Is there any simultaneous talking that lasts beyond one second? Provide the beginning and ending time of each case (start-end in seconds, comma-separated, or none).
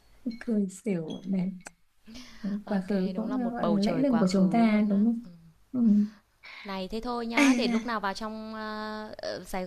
2.6-5.2